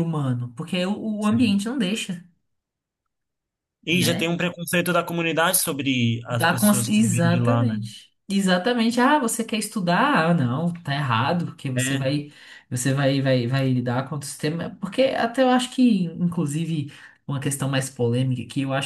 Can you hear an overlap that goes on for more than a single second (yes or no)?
yes